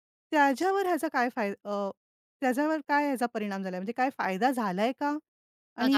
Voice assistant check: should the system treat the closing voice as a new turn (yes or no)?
yes